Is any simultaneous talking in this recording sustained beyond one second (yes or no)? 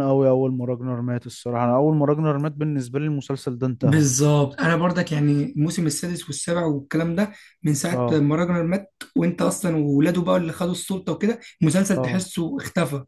no